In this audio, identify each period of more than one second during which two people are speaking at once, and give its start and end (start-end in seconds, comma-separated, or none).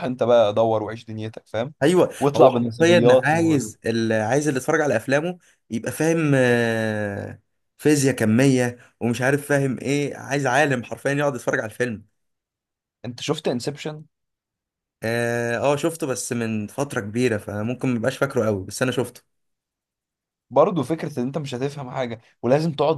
2.2-3.8